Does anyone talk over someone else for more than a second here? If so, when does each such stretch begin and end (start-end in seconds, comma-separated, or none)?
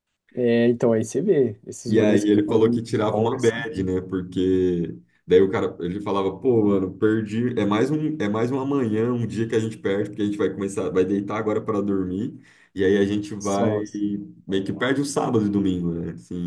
1.9-3.6